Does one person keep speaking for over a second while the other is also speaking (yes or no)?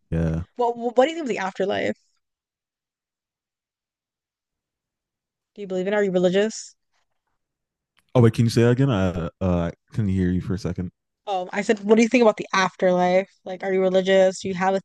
no